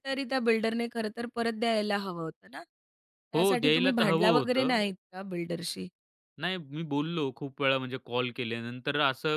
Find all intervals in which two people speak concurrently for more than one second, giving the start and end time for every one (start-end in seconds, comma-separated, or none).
3.3-4.8